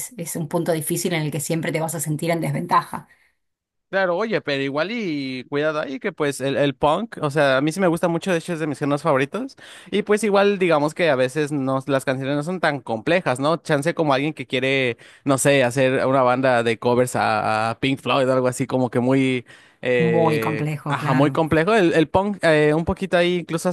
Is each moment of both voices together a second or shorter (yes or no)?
no